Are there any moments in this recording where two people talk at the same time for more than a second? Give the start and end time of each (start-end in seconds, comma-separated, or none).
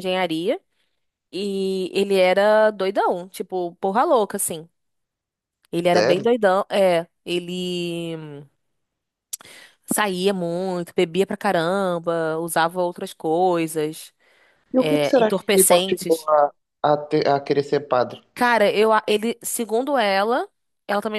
14.8-16.3